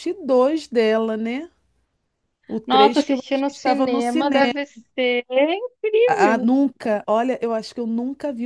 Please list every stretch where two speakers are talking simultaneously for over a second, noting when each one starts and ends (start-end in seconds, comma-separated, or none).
2.6-4.5